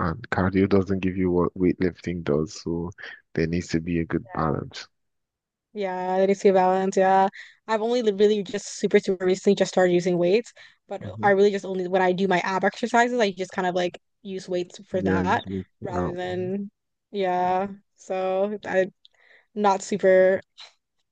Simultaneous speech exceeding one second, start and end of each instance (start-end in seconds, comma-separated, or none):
14.9-16.5